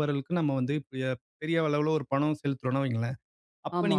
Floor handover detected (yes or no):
no